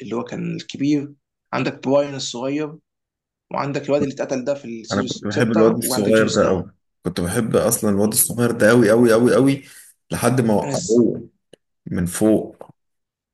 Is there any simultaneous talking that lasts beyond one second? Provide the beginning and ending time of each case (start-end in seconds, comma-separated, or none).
4.9-6.7